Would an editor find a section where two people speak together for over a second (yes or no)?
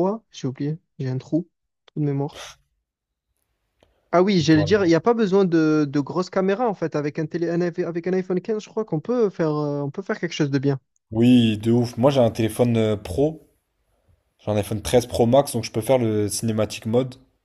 no